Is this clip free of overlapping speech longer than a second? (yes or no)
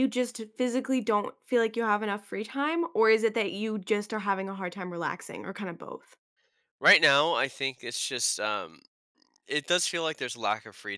yes